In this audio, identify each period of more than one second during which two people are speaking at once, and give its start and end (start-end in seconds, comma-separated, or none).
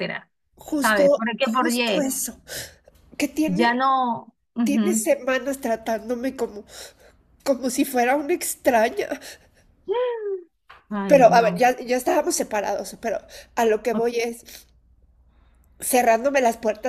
0.8-2.1